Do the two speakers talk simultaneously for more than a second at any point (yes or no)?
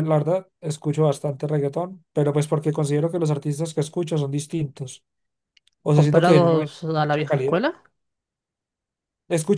yes